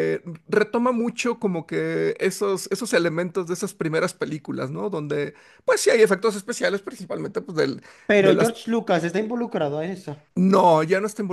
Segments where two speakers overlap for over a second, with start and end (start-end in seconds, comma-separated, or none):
none